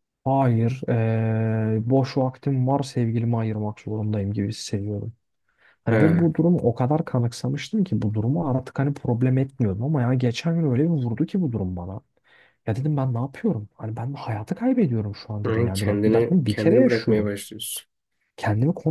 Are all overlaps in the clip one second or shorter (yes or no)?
no